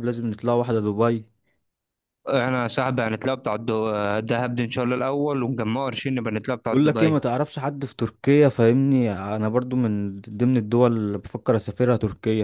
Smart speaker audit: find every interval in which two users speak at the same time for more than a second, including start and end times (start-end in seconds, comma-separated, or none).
none